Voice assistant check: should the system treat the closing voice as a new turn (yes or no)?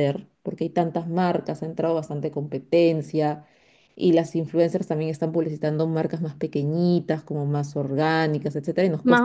yes